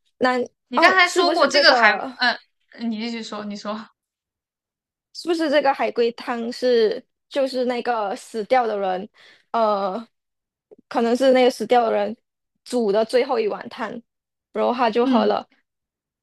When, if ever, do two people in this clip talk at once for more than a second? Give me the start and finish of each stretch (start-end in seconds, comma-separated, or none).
0.8-2.2